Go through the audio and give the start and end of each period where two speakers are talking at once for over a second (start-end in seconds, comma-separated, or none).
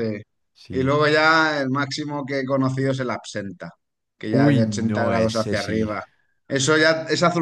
4.3-5.9